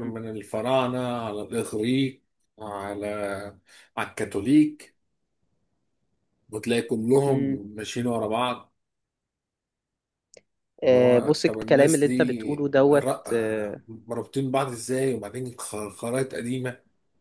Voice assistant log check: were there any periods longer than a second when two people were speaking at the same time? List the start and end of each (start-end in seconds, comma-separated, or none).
10.8-13.8